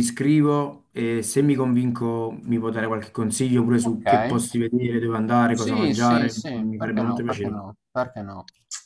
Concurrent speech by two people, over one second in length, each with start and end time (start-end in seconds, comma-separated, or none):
5.5-7.6